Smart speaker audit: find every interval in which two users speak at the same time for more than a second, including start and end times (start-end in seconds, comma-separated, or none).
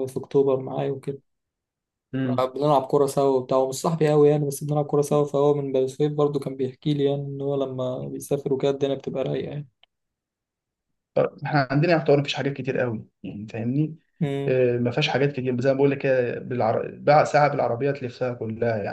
none